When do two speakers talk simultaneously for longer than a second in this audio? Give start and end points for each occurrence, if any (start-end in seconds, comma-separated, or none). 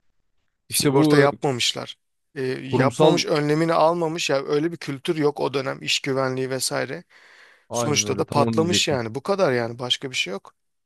7.7-9.0